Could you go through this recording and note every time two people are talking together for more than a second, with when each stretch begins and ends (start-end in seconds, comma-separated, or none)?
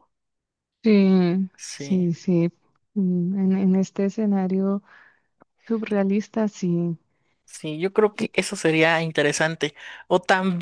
none